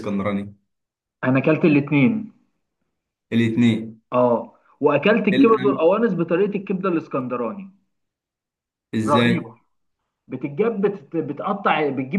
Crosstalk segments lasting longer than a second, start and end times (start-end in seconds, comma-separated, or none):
none